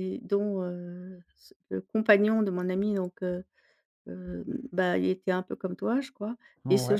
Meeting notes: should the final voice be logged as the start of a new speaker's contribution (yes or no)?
no